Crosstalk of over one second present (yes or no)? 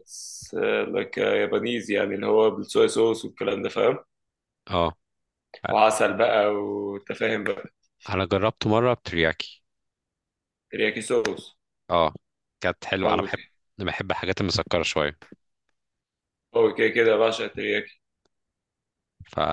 no